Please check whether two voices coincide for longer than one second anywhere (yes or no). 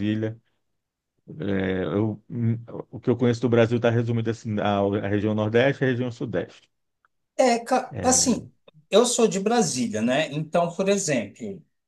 no